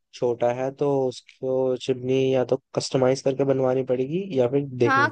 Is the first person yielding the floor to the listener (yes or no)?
yes